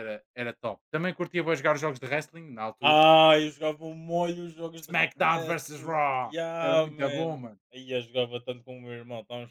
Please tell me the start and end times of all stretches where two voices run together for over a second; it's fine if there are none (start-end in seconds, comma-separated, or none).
4.8-7.6